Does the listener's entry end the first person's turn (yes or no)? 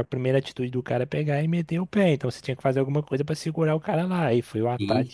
yes